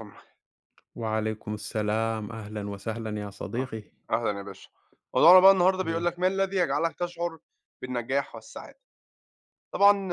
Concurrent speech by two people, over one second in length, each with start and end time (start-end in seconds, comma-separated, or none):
none